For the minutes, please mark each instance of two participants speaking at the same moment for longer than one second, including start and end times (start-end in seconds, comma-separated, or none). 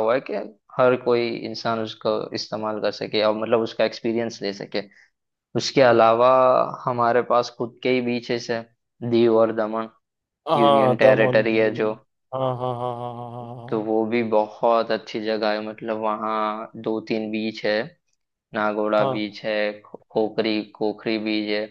10.6-11.9